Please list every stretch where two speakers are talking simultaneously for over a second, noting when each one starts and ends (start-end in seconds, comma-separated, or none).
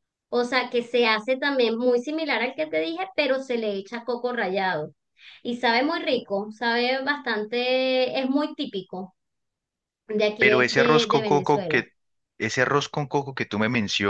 10.4-11.8